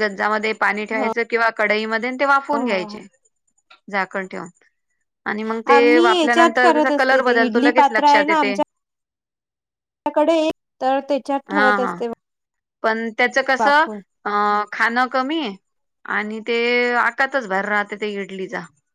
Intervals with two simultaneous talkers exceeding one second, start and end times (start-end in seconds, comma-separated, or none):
5.8-8.0